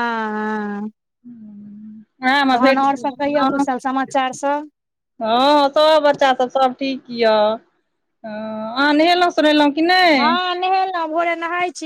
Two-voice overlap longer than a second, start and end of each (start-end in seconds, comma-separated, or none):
none